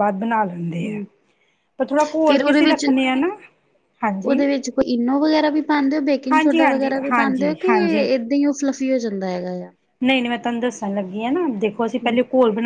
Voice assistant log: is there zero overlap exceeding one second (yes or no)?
no